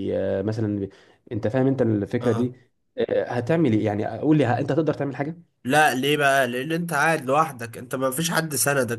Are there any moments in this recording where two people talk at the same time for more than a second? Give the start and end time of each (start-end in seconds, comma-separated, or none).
none